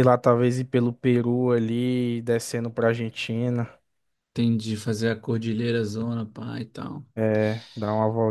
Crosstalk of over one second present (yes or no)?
no